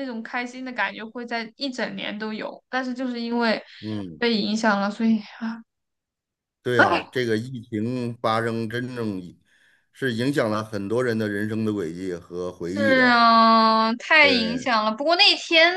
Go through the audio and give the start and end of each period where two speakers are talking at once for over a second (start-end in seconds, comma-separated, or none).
none